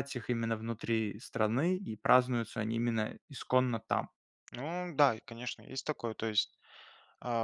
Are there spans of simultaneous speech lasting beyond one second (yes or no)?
no